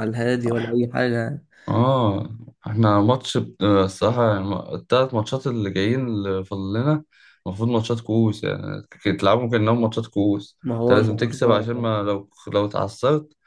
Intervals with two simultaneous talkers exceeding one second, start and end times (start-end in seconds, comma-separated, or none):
10.6-11.9